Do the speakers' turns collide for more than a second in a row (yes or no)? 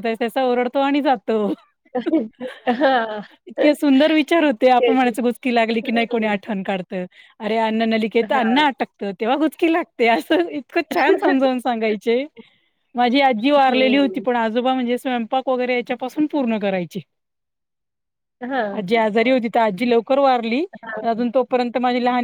no